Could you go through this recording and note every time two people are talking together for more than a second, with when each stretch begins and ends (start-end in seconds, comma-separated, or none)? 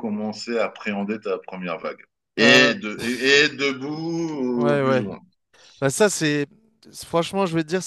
none